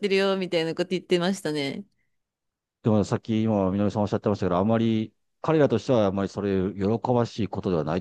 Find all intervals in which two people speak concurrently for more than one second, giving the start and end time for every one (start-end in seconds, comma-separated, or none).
none